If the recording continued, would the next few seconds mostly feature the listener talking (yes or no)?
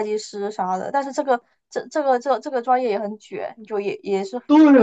yes